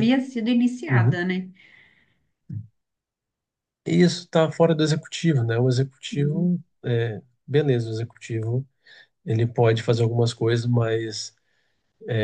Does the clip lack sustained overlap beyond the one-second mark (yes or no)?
yes